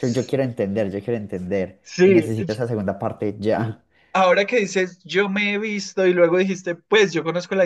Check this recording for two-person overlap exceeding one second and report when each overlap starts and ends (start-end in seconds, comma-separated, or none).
none